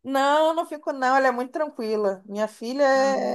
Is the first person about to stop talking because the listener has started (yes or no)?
no